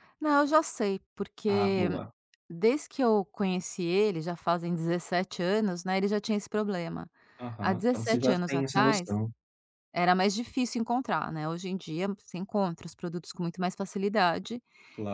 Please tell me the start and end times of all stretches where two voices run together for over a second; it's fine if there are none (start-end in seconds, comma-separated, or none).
7.6-9.1